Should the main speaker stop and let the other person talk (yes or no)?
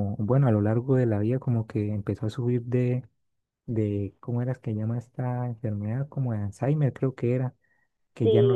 yes